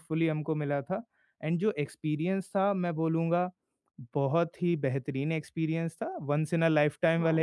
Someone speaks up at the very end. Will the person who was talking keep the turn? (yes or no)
yes